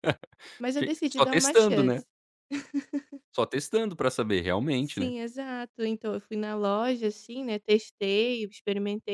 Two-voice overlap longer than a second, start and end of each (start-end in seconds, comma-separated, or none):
0.8-2.0